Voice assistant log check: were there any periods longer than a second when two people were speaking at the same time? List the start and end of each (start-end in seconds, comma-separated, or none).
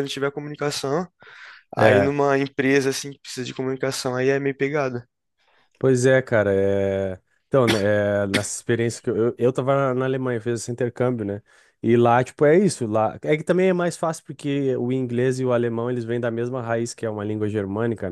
none